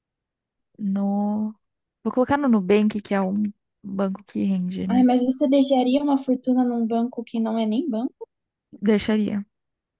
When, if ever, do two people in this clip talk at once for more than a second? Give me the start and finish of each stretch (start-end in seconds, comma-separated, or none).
none